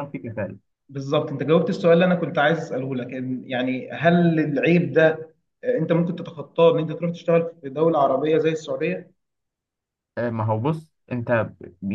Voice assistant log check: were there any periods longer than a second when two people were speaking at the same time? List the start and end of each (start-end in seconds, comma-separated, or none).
none